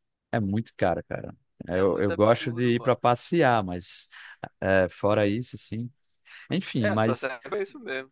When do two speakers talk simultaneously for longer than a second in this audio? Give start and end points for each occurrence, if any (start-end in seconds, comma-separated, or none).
1.7-3.0